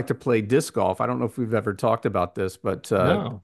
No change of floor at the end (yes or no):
yes